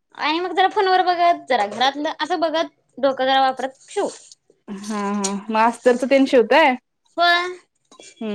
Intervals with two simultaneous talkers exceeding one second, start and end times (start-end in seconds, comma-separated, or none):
none